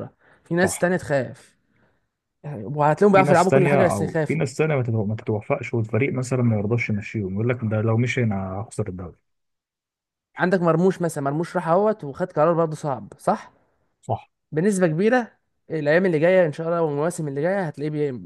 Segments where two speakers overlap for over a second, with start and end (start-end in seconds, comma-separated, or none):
3.1-4.4